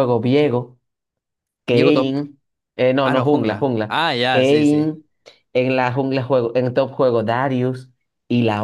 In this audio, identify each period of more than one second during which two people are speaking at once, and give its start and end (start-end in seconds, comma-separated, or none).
3.0-4.9